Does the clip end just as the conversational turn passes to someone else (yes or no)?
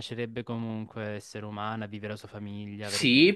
yes